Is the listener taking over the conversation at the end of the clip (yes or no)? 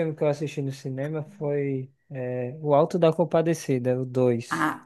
yes